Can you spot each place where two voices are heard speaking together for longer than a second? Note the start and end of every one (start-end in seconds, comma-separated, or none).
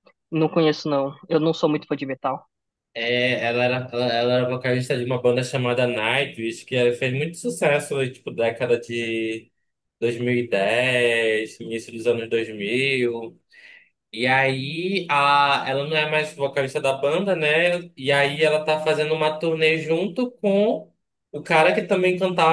none